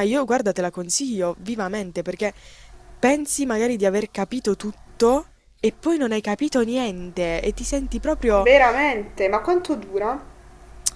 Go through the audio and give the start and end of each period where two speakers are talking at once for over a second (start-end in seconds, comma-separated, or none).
none